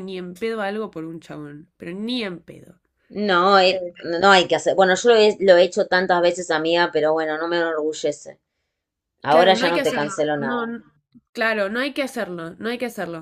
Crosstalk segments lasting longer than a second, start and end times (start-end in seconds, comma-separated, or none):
9.3-10.7